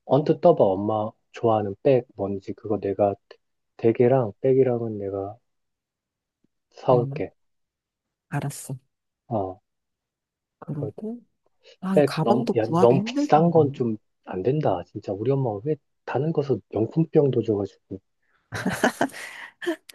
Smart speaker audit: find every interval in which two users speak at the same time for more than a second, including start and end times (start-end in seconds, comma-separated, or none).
11.9-13.8